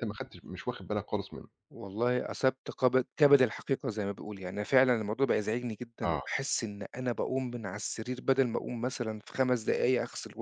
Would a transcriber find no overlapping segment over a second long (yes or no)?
yes